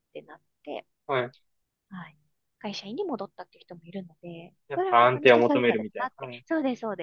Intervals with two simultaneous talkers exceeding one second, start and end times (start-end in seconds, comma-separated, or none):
4.7-6.4